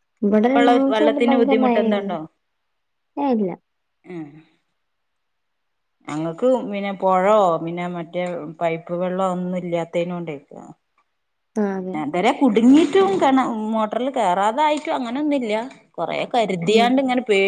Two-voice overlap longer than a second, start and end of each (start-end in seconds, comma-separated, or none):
0.5-2.1